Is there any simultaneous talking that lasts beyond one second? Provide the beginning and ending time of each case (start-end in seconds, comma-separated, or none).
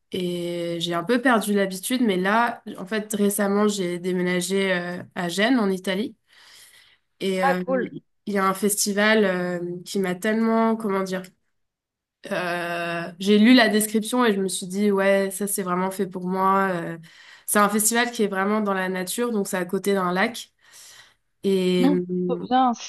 none